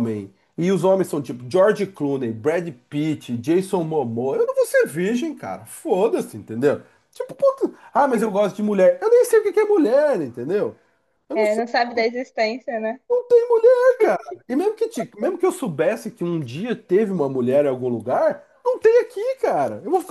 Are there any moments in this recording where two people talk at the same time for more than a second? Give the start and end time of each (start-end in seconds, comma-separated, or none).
none